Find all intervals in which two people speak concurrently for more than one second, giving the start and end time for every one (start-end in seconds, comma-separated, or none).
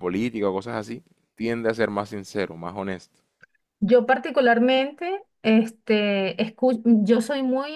none